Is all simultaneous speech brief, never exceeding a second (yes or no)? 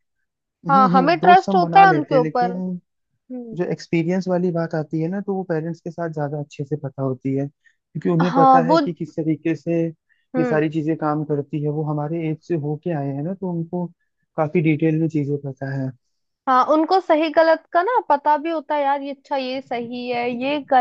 no